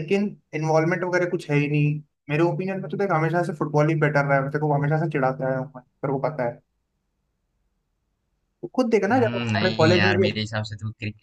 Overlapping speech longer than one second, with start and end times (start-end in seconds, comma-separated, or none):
9.1-10.4